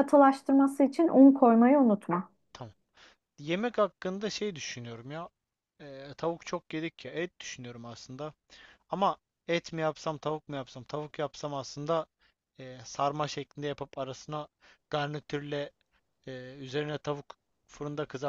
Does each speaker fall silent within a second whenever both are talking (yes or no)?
yes